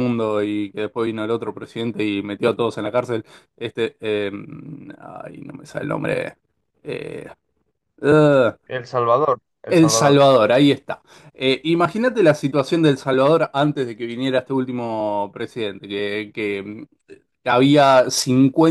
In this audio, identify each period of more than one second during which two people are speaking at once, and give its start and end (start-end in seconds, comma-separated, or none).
none